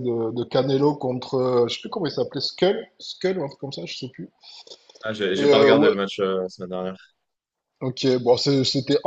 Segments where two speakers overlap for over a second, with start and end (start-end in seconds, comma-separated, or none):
none